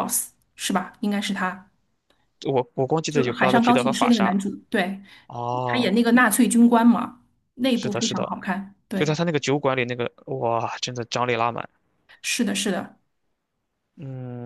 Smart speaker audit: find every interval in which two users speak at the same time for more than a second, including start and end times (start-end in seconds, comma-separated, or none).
3.1-4.3